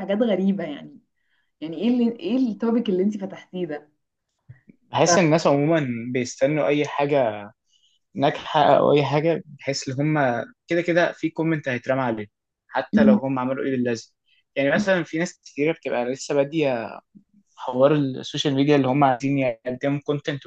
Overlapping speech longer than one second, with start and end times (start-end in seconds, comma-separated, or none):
none